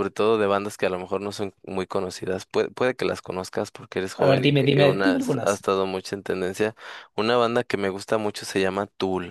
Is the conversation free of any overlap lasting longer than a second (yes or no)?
no